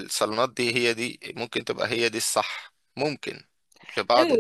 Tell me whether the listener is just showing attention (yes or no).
no